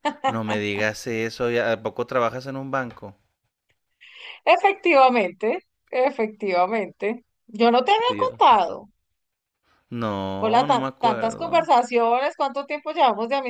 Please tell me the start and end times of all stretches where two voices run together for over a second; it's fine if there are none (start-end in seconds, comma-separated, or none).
10.4-11.7